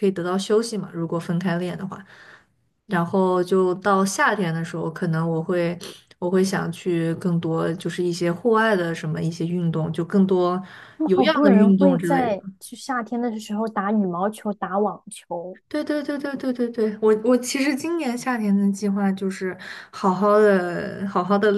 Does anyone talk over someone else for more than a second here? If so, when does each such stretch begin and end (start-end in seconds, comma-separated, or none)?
11.0-12.4